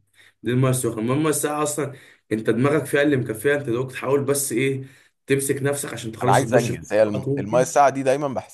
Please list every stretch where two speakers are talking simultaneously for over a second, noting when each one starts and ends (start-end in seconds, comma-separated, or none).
6.2-7.7